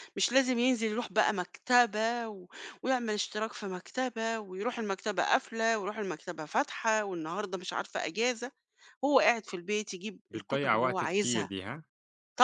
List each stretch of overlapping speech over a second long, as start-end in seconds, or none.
10.3-11.5